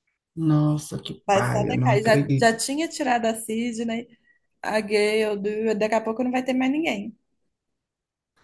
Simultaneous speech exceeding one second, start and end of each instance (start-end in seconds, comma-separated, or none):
1.3-2.6